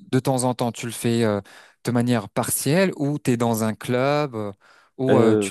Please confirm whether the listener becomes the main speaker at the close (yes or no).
yes